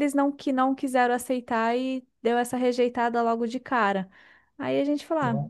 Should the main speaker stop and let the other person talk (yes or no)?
no